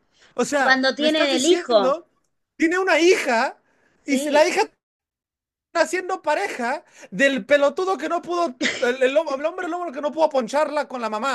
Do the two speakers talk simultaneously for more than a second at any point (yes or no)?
yes